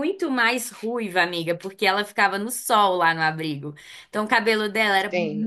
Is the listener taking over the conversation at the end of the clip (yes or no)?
no